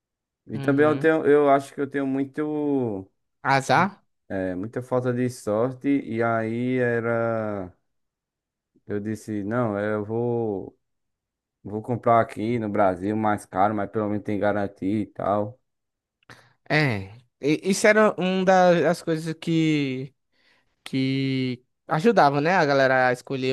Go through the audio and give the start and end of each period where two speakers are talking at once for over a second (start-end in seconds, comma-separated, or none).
none